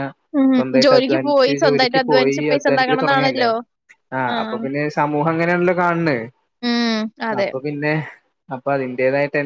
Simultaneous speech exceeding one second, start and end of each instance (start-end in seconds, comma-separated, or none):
0.5-3.5